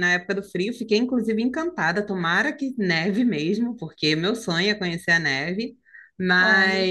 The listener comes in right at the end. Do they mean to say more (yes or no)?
no